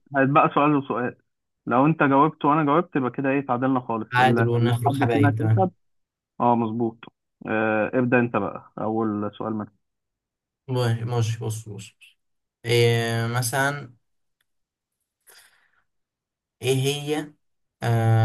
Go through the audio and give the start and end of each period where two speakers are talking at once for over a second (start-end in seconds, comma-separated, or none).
4.1-5.7